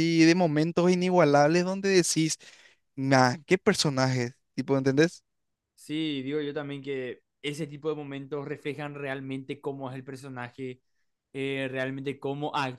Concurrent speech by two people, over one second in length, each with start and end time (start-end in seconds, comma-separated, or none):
none